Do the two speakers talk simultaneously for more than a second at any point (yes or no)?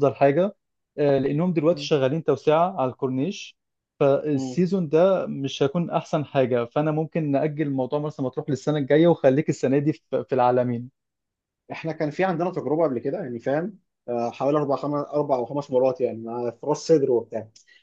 no